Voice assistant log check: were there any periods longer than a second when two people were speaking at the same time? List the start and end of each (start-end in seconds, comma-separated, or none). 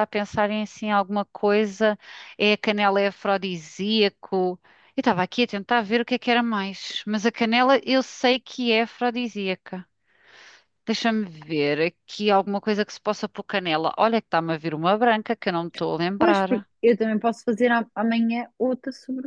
none